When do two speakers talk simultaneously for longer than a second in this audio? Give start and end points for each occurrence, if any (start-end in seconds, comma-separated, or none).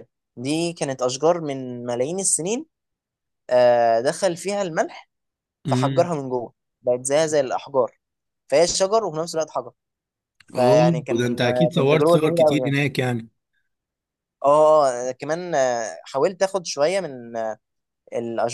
10.6-12.8